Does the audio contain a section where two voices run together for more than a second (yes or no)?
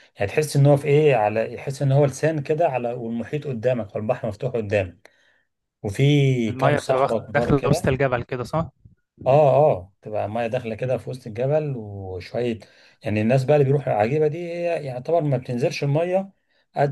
yes